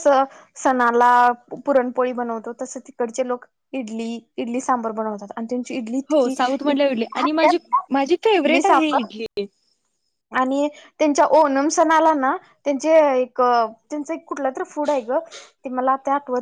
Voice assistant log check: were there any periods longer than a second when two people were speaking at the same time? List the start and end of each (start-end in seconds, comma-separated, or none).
6.1-7.6